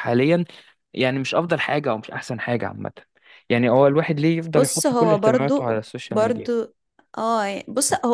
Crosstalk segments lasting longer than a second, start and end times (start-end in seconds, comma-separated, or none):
4.5-6.5